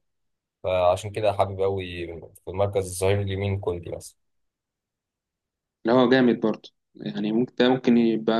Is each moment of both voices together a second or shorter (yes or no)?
yes